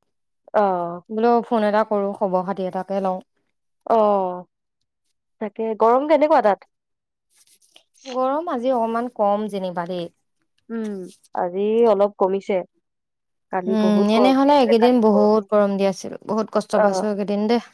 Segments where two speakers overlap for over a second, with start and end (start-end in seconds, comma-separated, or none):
13.8-15.4